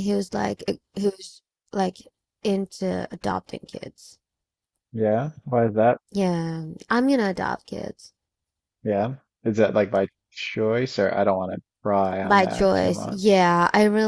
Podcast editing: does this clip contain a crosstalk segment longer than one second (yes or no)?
yes